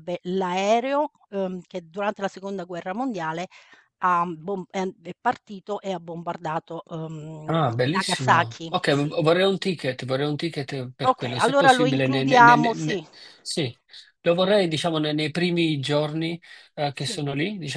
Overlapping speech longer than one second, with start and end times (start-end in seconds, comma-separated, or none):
7.5-9.1, 11.0-13.0